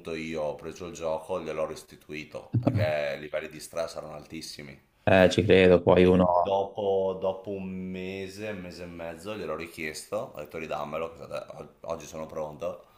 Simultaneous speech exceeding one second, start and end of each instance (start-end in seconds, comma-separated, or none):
none